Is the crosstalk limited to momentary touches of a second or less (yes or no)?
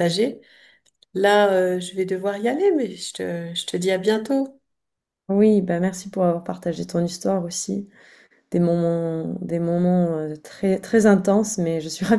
yes